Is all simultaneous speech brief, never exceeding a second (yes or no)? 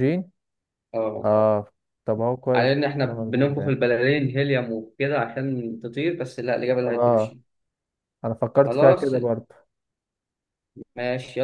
no